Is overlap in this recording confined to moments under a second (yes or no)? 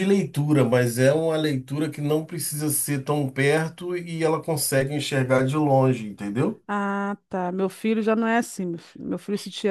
yes